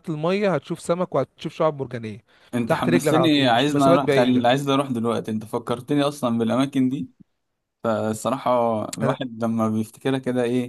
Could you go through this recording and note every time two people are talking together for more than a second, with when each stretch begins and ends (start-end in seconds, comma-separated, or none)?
2.7-4.6